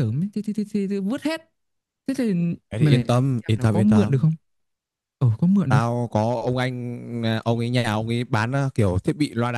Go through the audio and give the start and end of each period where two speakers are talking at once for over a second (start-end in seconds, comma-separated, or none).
2.7-4.3